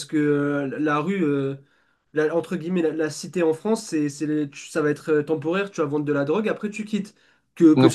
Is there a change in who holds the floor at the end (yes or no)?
yes